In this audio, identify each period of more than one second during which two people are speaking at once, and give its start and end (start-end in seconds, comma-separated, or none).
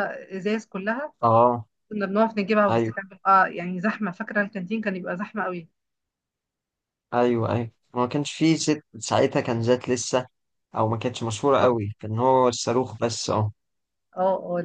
none